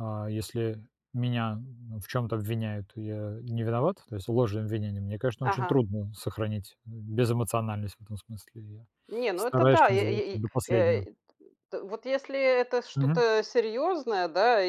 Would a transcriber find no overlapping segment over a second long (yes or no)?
no